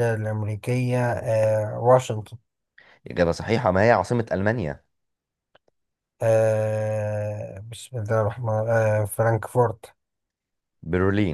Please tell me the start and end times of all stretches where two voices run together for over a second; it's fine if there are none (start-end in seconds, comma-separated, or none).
none